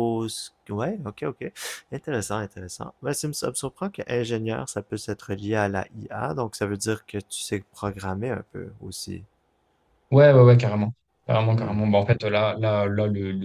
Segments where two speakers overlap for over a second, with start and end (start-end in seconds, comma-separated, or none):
none